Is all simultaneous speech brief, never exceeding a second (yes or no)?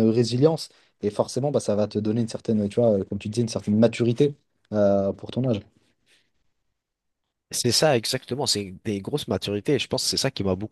yes